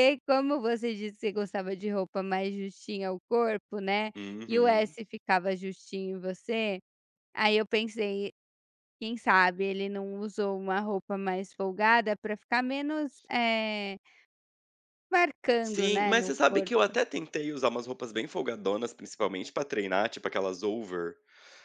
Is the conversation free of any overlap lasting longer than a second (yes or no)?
no